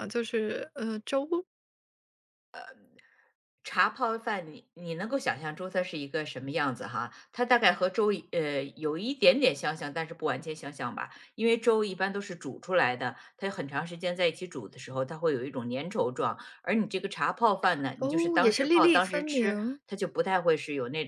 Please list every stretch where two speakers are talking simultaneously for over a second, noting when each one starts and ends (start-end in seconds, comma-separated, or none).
18.0-19.8